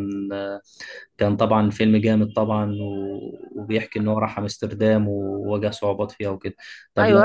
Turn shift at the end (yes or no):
yes